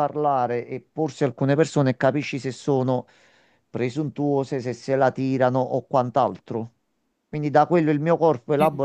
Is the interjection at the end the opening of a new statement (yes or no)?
no